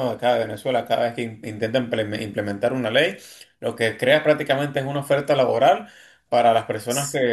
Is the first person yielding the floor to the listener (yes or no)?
no